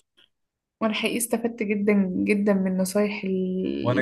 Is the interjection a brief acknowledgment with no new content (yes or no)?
no